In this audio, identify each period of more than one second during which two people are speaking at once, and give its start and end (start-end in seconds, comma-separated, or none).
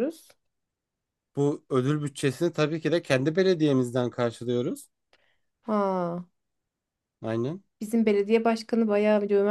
none